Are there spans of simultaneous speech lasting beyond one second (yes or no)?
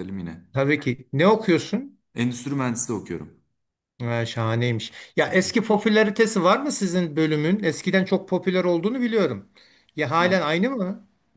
no